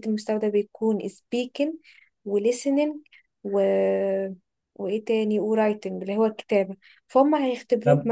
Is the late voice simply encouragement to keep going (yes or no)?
yes